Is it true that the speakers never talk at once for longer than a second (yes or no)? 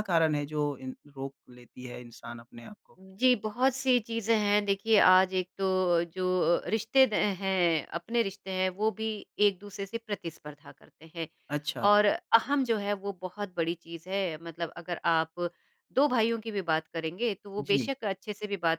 yes